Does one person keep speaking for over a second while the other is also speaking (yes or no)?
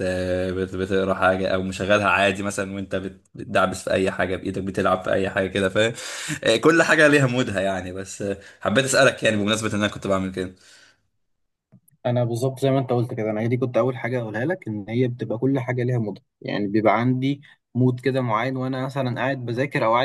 no